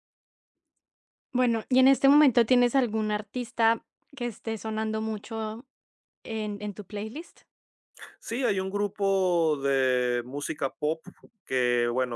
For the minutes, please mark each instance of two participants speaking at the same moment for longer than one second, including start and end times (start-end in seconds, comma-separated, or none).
none